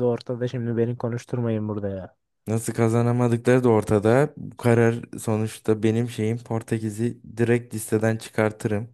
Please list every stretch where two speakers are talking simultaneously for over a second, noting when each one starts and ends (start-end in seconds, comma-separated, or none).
none